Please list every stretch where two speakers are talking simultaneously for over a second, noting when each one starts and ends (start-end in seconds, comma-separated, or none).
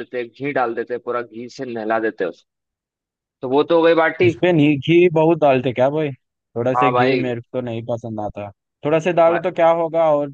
none